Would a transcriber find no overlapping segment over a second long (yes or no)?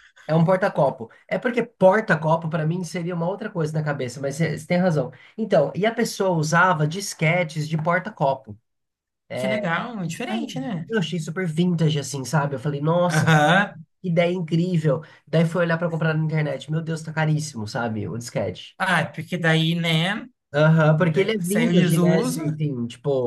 no